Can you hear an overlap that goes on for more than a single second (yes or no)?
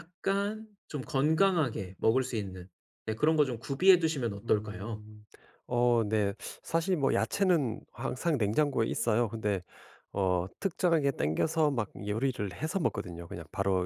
no